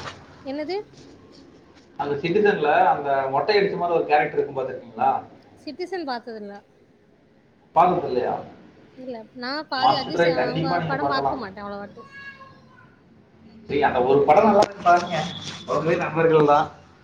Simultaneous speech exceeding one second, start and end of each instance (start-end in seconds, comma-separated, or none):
9.8-11.4